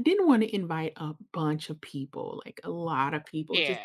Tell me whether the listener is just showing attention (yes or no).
yes